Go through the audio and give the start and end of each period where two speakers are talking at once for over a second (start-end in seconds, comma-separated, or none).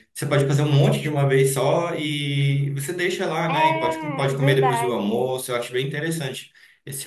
3.5-5.3